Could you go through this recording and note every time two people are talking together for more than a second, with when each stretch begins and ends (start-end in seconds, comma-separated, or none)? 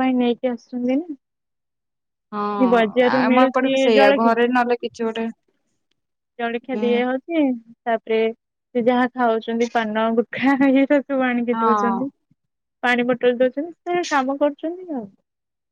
2.6-4.3